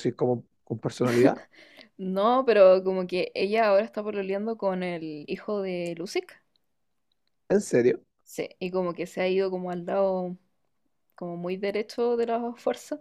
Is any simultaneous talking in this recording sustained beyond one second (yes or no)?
no